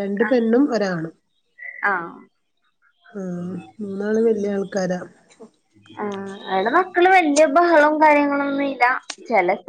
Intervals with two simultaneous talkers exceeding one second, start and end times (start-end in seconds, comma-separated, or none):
none